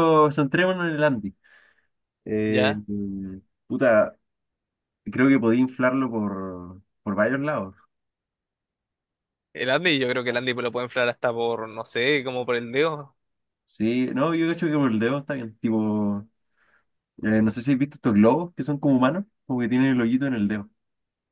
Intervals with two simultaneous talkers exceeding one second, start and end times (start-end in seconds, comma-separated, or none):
none